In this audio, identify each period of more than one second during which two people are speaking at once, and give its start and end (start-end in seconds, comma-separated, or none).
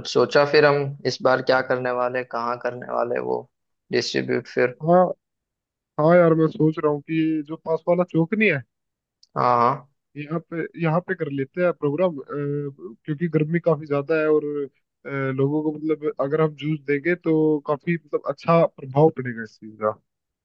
none